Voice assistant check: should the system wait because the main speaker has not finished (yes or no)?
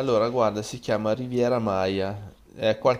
yes